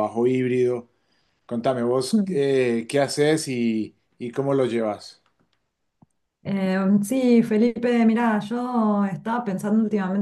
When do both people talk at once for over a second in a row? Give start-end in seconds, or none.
none